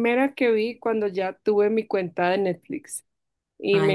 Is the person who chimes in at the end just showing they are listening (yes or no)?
yes